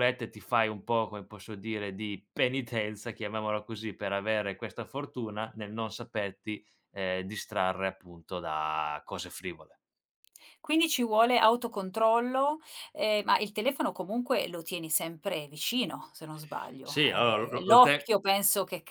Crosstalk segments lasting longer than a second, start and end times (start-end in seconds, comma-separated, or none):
16.8-18.1